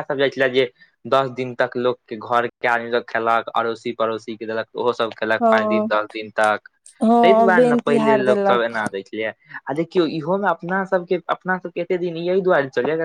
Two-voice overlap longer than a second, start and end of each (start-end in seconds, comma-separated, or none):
7.2-8.8